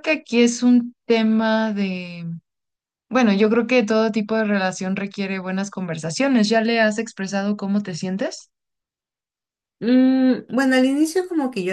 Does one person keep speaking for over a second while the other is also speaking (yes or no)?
no